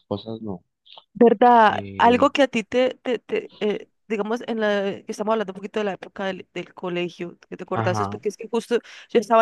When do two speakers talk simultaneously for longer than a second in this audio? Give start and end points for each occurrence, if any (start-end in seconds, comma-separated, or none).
none